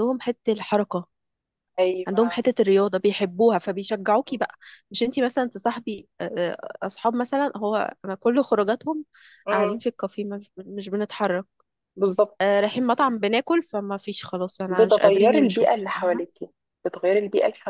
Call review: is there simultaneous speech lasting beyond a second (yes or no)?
yes